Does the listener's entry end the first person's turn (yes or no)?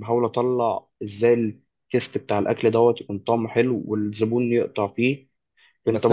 yes